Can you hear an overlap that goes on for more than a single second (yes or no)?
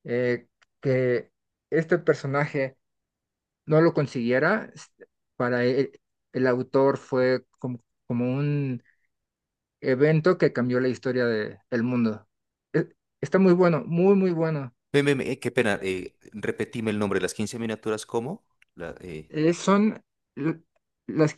no